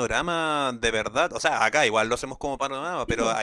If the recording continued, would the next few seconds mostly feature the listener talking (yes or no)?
no